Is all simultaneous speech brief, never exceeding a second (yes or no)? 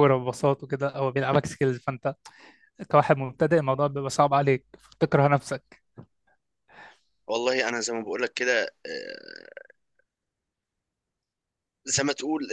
yes